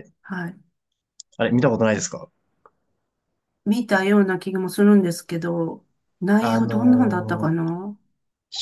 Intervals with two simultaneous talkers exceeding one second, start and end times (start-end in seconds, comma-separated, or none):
6.4-7.6